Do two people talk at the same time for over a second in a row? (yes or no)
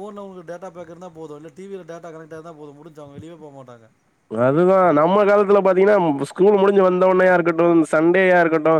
no